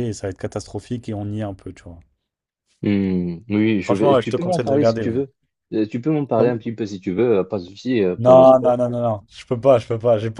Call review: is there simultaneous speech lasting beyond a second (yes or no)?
yes